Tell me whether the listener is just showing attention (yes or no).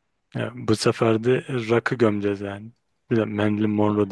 yes